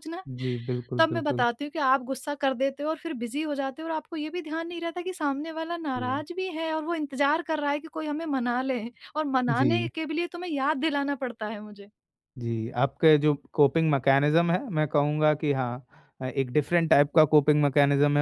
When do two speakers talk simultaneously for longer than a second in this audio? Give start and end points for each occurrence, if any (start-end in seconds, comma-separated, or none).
none